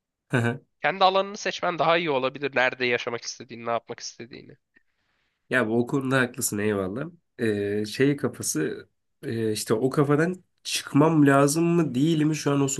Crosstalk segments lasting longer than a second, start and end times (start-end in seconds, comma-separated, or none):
none